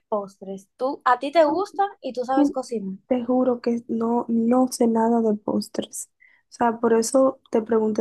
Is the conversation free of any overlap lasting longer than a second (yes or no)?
yes